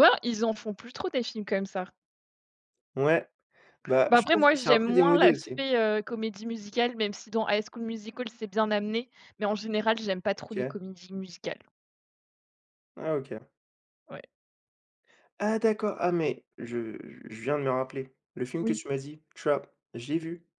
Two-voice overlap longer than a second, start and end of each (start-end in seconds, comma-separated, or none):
4.1-5.6